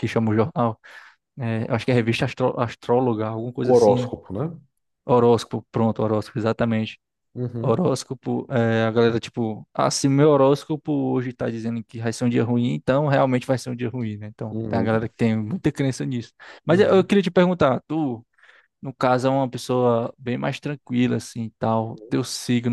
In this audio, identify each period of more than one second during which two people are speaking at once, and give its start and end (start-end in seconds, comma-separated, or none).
none